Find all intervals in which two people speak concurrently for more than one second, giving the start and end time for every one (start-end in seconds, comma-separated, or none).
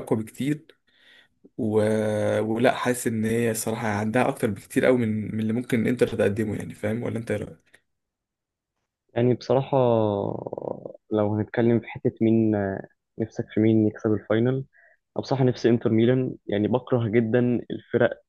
none